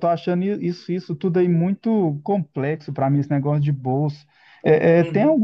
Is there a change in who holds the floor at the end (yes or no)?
no